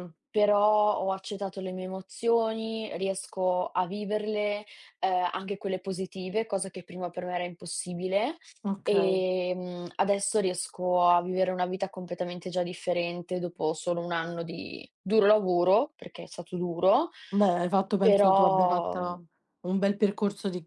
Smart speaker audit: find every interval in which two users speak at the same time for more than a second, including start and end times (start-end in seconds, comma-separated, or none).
18.0-19.2